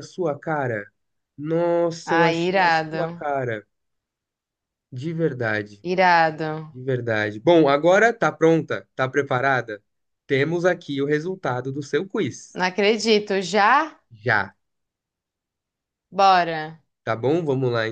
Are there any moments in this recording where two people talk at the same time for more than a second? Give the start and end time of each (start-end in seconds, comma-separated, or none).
2.0-3.2